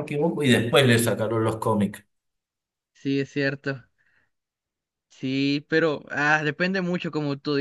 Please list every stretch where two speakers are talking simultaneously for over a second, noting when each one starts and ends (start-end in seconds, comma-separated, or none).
none